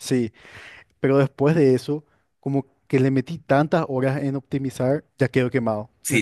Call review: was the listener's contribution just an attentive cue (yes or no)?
no